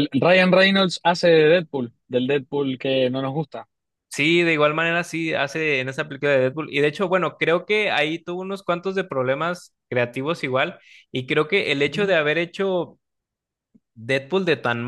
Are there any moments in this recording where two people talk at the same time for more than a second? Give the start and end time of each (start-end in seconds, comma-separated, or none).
none